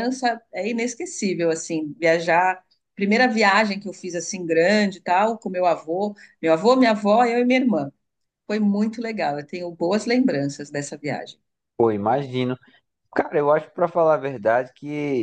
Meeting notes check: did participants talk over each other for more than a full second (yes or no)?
no